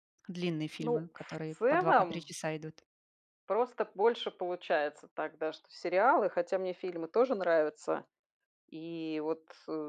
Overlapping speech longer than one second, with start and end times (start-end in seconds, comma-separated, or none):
0.8-2.3